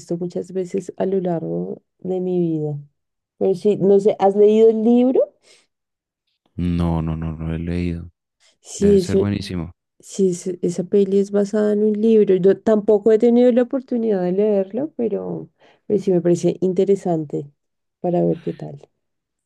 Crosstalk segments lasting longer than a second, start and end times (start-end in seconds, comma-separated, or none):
none